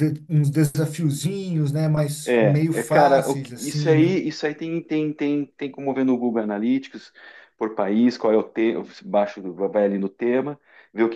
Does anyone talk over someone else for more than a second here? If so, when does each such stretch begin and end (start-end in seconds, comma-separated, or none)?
2.2-4.2